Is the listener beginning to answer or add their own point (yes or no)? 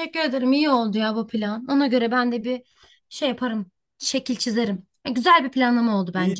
yes